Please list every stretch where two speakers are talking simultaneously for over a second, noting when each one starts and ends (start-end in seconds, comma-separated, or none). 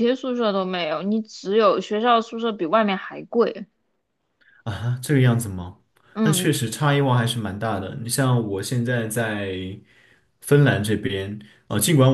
none